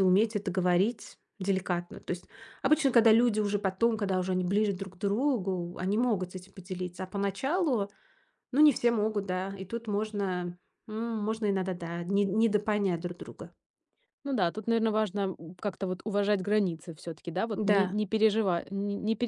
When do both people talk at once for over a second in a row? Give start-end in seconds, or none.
none